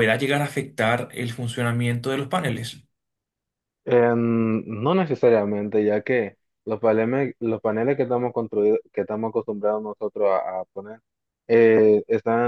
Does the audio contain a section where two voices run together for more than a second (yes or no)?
no